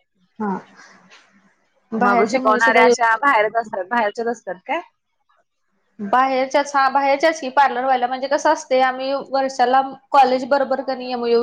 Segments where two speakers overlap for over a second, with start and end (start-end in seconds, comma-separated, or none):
2.0-3.8